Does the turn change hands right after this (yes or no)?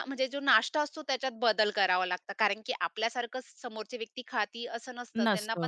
no